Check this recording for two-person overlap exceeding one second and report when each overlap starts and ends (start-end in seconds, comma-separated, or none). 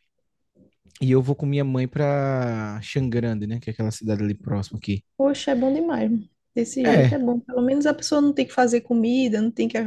none